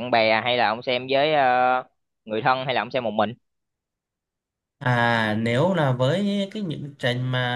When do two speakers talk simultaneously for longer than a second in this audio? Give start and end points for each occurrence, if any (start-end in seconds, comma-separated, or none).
none